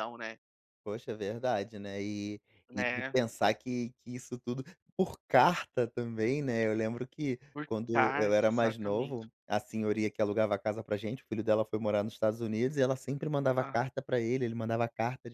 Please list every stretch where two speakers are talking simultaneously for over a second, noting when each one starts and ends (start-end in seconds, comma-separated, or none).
7.5-9.2